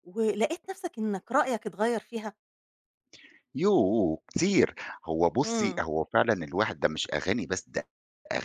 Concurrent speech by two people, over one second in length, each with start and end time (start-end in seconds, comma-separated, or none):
none